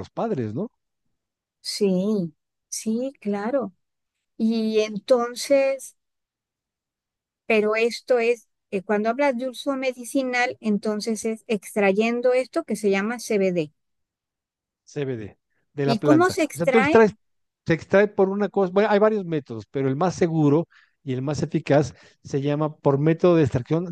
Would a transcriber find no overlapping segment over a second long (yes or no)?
no